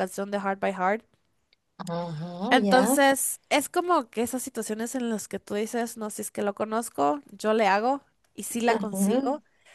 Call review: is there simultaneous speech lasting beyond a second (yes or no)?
no